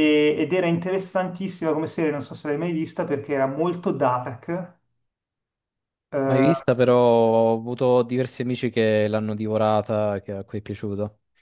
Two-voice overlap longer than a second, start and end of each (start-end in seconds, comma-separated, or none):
none